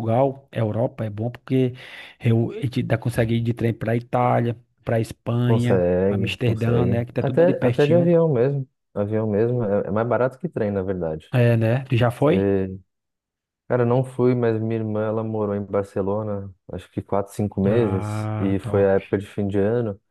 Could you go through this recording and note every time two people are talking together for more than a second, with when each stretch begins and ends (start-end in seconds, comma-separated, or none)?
5.5-8.1, 17.6-18.9